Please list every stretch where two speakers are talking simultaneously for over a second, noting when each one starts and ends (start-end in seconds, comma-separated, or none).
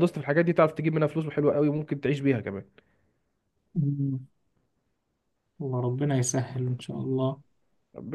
none